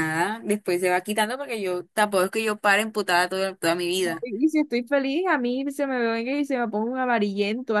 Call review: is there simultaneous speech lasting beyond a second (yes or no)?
no